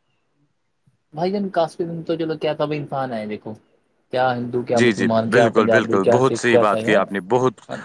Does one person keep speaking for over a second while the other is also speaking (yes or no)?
yes